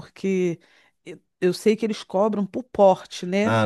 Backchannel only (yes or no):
no